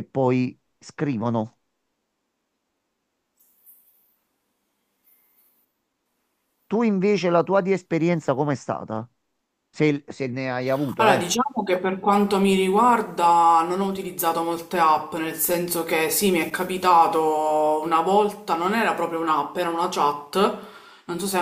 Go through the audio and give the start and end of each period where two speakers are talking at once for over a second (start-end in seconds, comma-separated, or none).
none